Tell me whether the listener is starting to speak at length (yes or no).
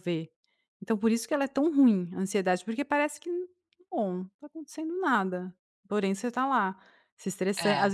no